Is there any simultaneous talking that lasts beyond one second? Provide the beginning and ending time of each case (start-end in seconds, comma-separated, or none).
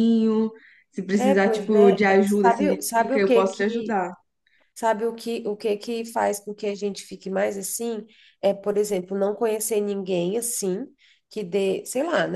1.1-4.0